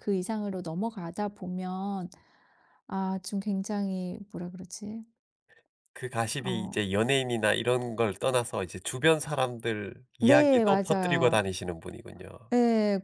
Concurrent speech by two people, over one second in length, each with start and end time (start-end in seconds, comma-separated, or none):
10.2-11.4